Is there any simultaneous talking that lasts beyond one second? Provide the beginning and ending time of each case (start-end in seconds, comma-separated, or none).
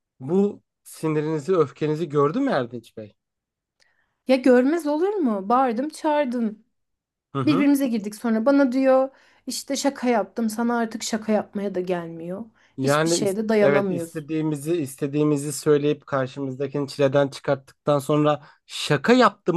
12.8-14.3